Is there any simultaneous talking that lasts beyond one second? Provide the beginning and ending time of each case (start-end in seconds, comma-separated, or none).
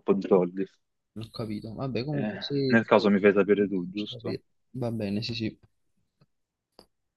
2.1-4.4